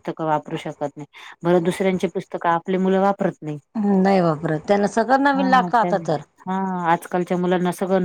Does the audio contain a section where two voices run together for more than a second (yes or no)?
no